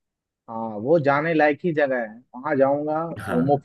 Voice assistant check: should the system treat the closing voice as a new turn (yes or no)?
no